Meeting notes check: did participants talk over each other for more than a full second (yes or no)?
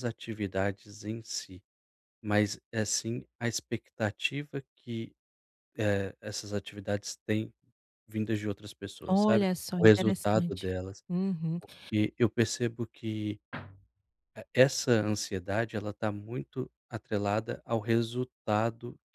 yes